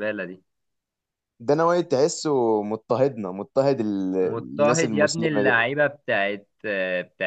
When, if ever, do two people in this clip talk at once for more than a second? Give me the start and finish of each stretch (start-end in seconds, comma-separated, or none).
4.2-5.7